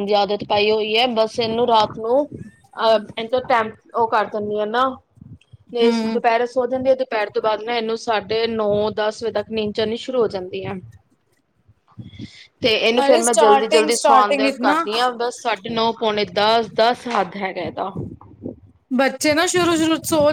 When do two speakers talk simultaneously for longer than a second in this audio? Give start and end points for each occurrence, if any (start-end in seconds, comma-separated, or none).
13.1-14.8